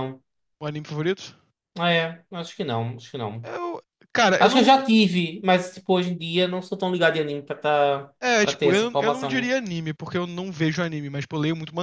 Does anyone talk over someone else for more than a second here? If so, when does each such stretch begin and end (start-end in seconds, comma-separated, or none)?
8.2-9.5